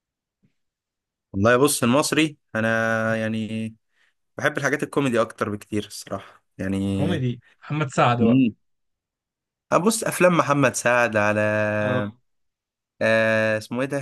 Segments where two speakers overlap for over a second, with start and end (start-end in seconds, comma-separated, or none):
none